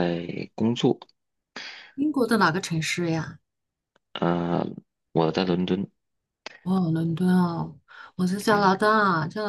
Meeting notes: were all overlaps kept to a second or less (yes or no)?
yes